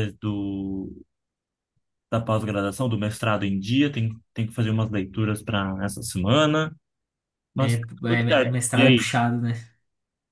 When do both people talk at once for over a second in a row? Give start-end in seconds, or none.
7.6-9.1